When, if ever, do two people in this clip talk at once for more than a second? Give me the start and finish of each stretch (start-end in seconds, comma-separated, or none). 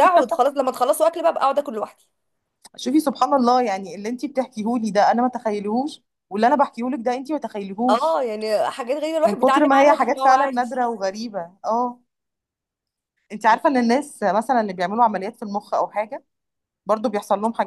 9.2-10.7